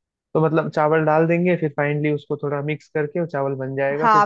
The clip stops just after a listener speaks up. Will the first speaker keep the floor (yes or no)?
no